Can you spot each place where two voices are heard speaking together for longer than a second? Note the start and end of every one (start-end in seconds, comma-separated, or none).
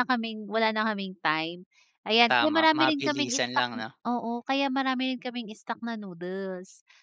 2.3-3.7